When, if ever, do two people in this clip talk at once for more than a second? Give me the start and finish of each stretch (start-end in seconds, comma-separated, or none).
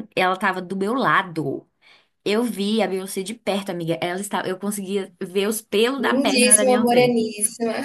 6.0-7.2